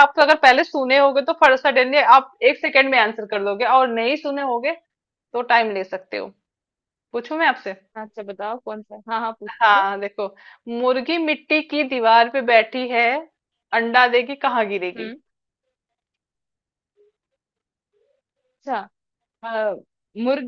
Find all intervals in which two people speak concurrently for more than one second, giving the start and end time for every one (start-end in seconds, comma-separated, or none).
none